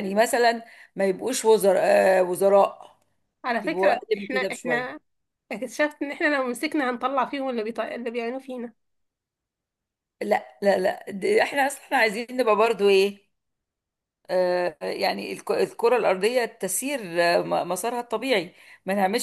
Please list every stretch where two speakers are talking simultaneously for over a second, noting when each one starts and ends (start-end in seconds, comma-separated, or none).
3.6-4.9